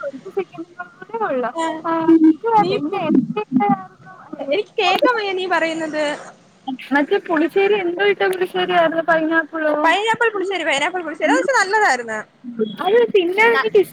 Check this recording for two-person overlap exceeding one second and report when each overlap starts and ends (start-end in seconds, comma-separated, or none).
none